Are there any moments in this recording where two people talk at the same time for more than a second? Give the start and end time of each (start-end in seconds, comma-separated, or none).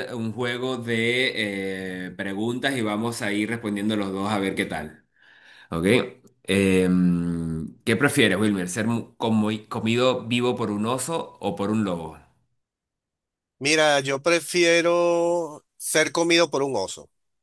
none